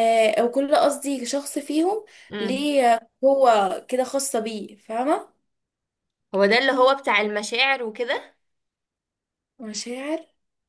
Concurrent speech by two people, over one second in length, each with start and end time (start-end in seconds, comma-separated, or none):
none